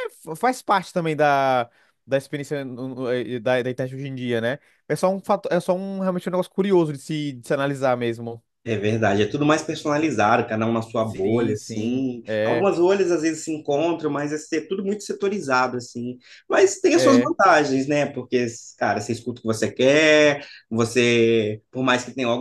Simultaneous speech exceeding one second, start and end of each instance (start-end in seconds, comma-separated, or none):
11.0-12.7